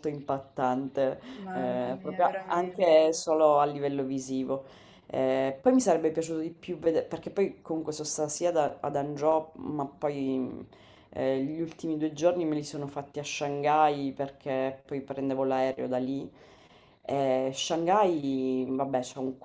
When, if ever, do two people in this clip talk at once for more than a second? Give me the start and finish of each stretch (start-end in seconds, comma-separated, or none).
1.4-3.0